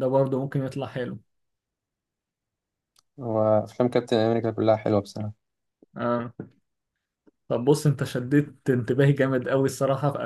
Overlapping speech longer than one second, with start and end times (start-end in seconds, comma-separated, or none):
none